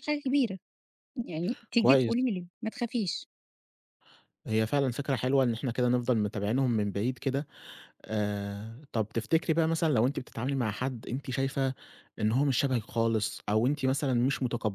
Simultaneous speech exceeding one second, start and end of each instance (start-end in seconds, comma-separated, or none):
none